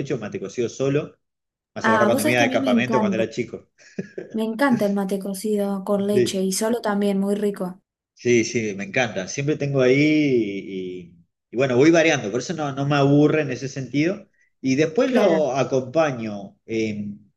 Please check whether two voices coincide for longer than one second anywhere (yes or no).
yes